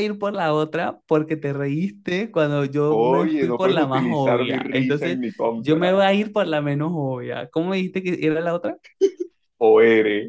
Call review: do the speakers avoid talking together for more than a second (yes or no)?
no